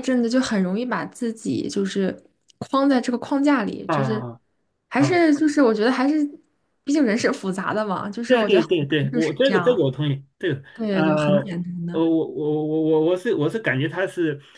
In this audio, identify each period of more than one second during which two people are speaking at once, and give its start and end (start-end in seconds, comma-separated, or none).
8.3-9.9